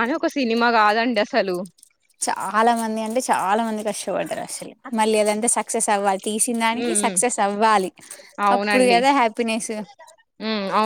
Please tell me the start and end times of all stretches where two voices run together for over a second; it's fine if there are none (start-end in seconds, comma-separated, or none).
none